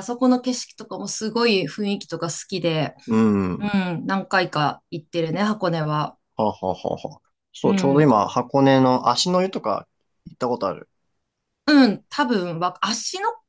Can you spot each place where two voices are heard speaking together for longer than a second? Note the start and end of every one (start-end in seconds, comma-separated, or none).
none